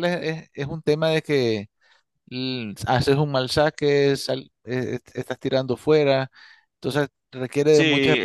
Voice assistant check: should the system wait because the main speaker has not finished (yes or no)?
no